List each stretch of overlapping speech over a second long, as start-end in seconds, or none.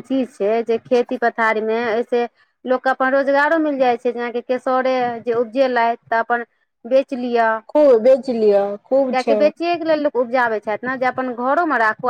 none